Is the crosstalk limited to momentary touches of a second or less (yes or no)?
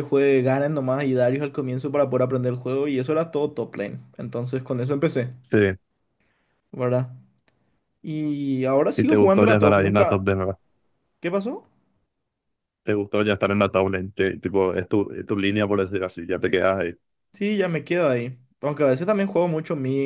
no